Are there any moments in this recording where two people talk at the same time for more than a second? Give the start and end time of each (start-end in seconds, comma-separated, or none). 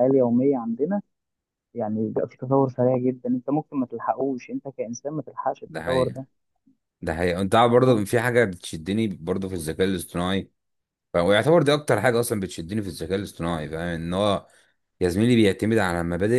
none